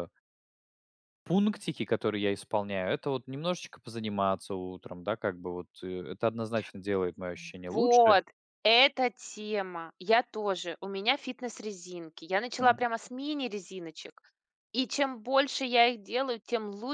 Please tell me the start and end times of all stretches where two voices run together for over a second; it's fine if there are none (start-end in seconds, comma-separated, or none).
none